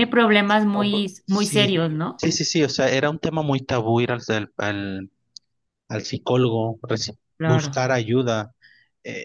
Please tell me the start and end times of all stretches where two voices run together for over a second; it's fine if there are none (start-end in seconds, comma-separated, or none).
0.7-2.2